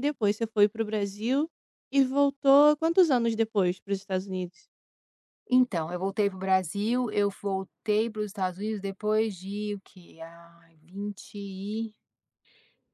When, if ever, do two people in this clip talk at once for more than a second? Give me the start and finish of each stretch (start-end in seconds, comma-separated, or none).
none